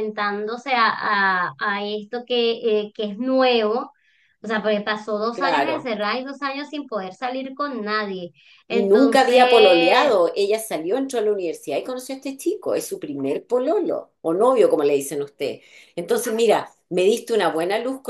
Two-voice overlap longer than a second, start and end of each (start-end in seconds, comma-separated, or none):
8.7-10.1